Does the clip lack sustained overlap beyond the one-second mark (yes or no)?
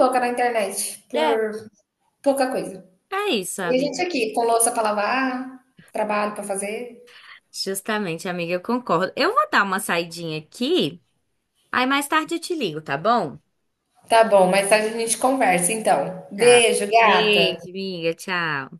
no